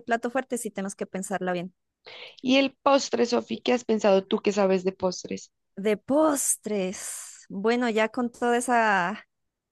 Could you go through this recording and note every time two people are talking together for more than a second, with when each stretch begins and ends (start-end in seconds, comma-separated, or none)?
none